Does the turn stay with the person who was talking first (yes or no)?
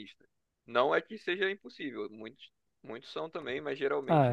no